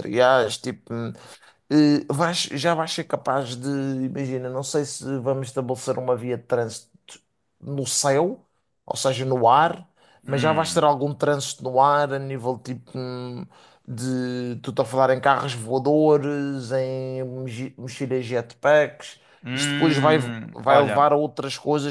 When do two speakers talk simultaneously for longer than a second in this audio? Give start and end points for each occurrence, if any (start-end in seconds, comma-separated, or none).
19.4-21.1